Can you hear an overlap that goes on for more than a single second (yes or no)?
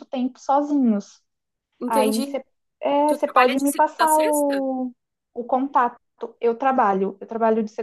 yes